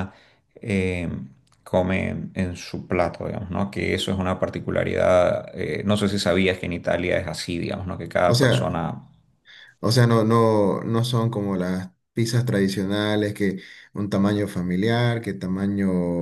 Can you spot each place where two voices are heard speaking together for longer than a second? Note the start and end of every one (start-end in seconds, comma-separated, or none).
none